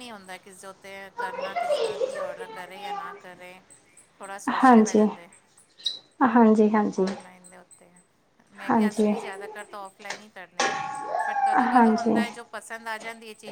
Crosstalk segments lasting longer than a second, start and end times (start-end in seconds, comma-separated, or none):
none